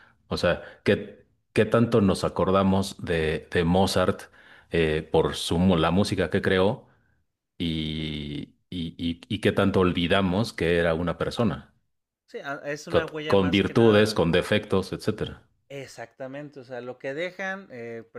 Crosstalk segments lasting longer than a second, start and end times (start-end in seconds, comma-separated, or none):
12.9-14.2